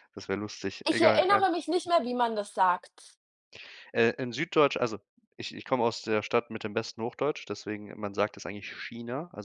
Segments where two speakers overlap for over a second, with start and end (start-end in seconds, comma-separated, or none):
none